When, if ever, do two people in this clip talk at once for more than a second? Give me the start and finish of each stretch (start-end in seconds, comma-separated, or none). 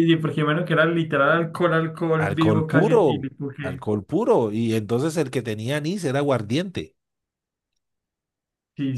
2.2-3.9